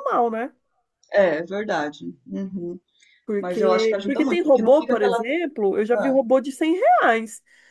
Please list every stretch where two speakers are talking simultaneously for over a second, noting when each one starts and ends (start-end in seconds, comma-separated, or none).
3.4-5.2